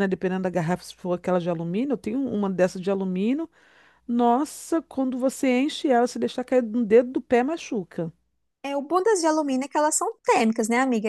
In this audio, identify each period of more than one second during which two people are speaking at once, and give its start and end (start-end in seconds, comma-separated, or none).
none